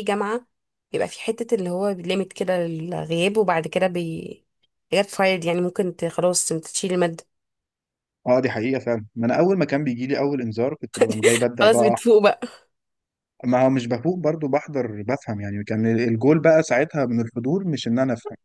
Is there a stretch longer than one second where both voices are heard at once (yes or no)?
no